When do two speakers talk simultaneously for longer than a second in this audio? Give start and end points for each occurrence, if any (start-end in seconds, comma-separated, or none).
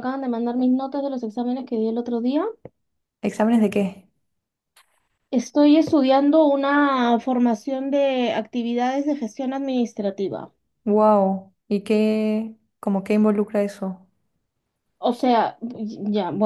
none